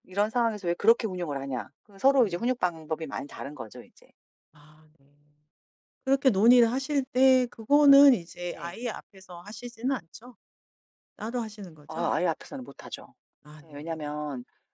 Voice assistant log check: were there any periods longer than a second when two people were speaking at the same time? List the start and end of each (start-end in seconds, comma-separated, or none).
none